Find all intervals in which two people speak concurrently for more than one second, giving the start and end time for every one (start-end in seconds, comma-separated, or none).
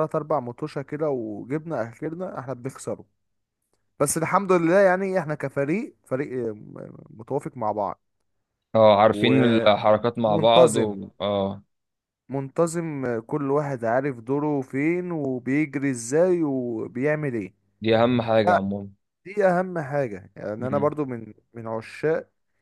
9.1-11.0